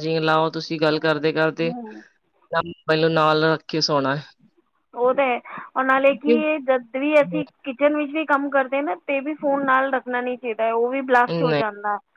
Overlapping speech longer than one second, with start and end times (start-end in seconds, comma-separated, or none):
none